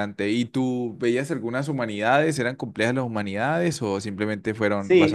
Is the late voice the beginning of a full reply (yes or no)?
yes